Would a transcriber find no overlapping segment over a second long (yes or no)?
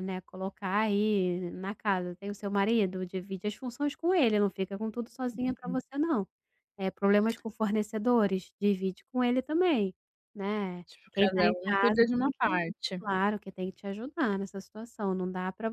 no